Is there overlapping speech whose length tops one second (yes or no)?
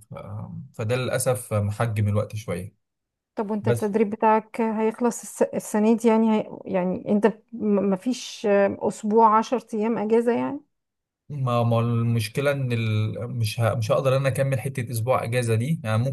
no